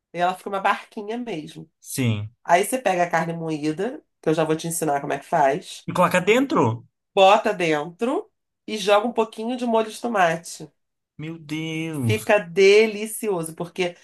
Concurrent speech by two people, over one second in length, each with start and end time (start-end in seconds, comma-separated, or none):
none